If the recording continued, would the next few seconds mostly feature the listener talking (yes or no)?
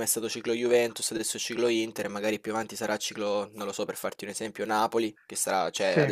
no